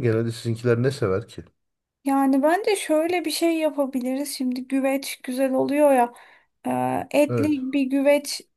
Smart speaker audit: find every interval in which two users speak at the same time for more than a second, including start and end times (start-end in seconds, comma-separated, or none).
none